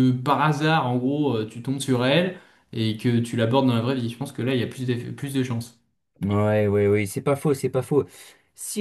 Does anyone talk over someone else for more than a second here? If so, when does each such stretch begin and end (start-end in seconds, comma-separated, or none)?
none